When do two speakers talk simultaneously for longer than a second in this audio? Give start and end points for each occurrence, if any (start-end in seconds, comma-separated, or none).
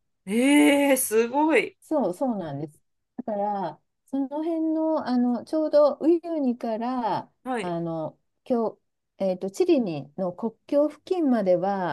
none